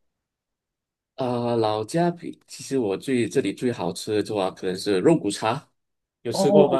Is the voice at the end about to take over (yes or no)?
yes